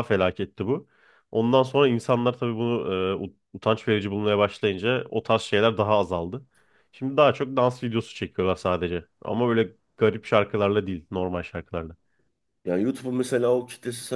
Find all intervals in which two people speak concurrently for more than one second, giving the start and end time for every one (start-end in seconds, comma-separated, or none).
none